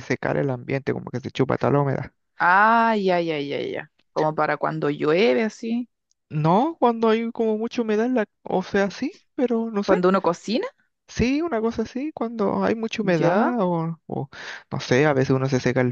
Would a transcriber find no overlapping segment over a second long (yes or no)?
yes